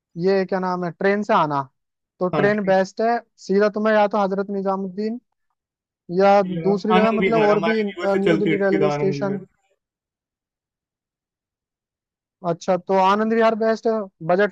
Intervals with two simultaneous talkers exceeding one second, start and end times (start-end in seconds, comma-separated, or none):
6.5-9.4